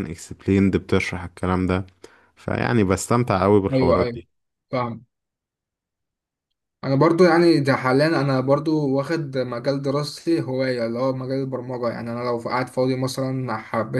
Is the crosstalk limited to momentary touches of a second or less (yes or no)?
yes